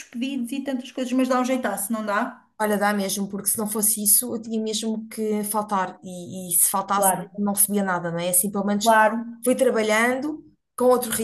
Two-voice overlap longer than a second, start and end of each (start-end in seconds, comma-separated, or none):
none